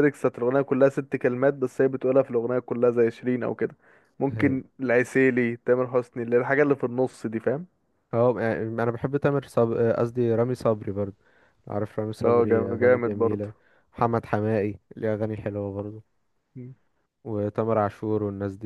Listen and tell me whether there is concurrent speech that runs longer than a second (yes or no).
yes